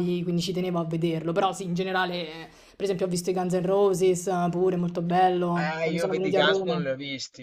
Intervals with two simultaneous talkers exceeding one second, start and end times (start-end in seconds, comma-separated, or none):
5.6-6.9